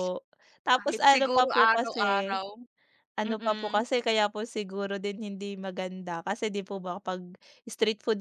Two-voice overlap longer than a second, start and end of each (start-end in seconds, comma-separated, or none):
0.8-2.4